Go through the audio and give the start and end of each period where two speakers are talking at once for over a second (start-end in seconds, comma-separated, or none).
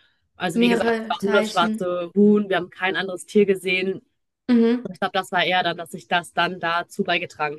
0.5-1.8